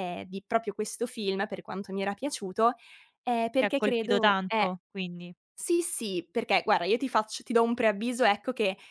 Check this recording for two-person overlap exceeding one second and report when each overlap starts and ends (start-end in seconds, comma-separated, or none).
3.5-4.8